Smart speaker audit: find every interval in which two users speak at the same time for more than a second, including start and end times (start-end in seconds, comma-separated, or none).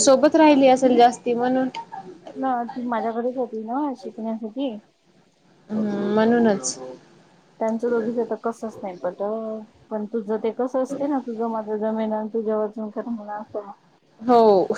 none